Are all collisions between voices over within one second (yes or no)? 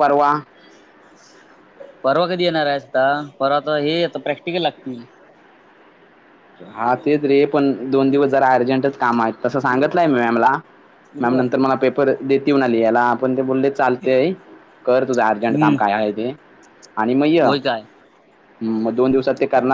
yes